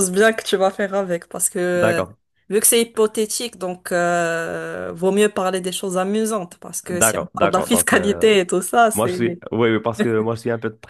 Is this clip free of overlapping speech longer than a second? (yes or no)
no